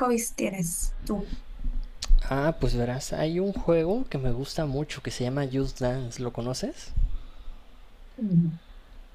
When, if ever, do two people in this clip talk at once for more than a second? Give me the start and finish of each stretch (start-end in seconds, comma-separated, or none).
none